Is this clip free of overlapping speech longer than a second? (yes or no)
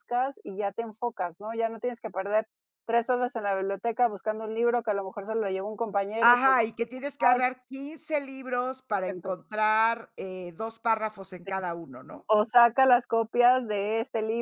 yes